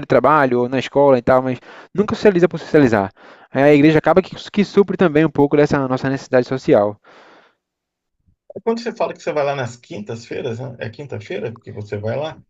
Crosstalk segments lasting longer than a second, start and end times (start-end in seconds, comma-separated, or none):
none